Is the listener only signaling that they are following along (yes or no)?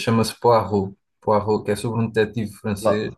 yes